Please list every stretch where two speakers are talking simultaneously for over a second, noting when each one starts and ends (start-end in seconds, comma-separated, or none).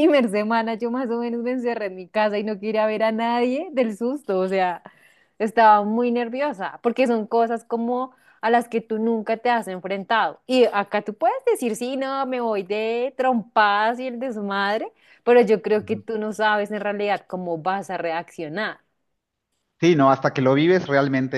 none